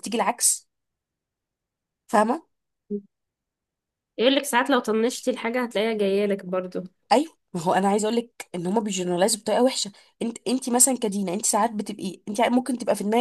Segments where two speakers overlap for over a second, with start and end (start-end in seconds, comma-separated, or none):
none